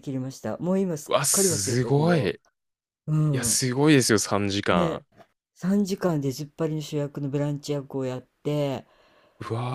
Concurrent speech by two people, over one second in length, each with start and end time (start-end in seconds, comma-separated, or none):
1.1-2.3